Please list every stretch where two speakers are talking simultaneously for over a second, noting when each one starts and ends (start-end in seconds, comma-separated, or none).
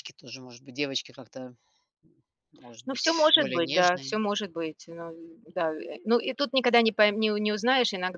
2.9-4.2